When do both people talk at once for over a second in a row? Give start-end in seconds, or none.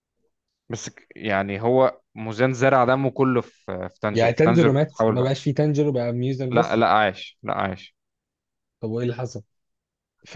4.1-5.4